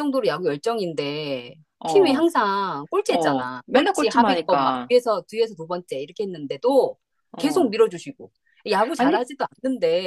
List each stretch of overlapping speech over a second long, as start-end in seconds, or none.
3.1-4.9